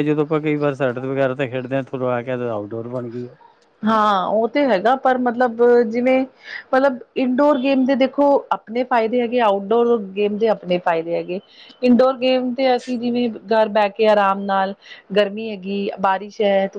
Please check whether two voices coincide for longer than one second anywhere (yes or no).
no